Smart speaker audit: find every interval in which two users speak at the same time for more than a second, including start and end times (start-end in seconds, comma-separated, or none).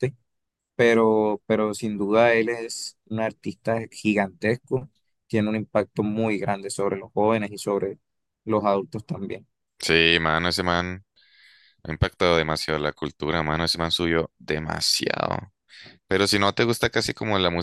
none